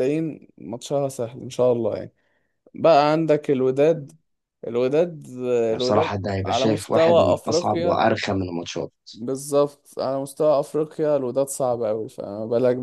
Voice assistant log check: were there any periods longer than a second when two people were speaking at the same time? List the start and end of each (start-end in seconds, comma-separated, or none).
5.7-8.1